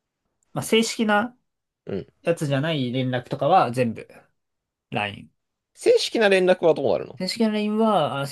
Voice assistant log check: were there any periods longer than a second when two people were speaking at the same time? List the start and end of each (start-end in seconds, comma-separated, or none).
none